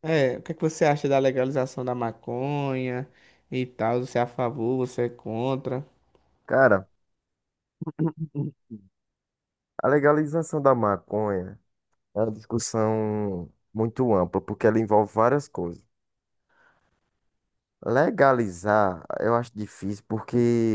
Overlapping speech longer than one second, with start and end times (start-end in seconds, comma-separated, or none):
none